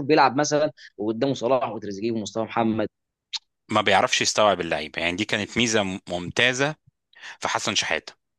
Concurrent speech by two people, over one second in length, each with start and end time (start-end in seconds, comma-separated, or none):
none